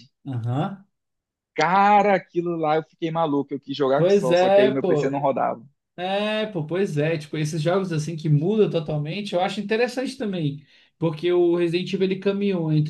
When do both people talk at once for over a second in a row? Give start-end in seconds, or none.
4.0-5.2